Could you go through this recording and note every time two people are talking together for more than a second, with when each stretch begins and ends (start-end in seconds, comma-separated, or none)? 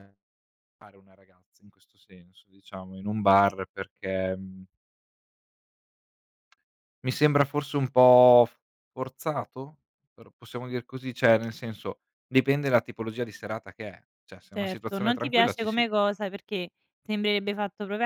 14.5-15.8